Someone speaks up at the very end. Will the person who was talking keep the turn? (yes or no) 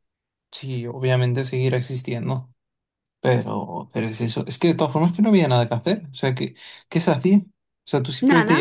yes